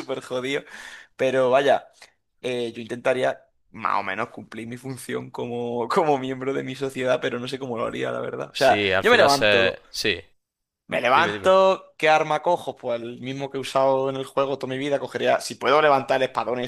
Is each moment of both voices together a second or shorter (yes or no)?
no